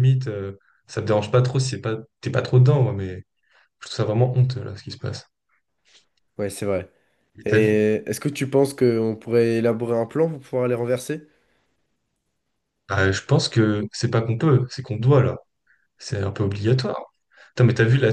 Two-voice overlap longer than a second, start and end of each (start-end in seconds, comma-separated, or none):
none